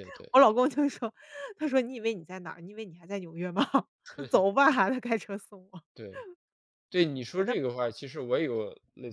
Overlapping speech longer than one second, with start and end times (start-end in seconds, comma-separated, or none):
none